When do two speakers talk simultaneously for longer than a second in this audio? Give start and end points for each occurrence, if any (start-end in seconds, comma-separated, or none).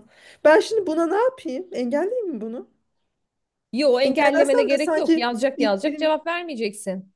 4.0-6.1